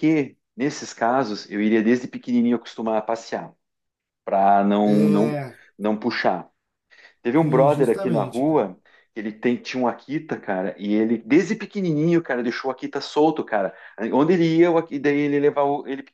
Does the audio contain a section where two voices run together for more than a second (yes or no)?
yes